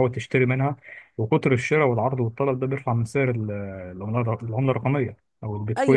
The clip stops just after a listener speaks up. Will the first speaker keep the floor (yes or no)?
no